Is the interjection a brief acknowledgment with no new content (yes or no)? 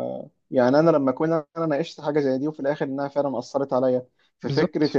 yes